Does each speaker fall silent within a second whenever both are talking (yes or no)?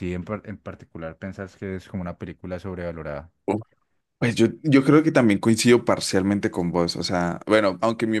yes